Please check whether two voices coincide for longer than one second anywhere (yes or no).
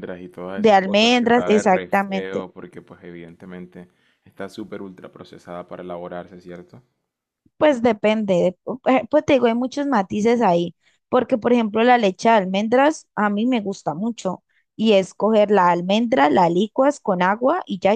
yes